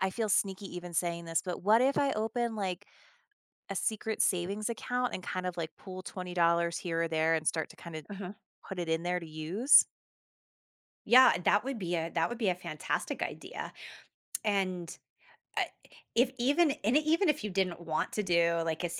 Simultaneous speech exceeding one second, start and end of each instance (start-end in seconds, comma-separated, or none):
none